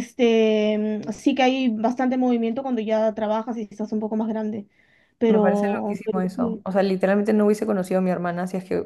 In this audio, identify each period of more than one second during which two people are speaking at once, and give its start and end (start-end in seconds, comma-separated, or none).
5.3-6.6